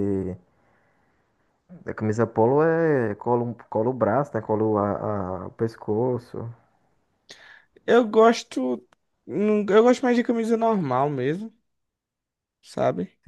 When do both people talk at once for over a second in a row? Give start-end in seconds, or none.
none